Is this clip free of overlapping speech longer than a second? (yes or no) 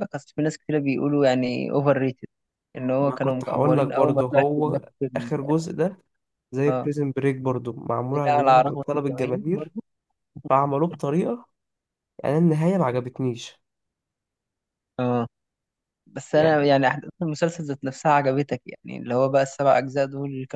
no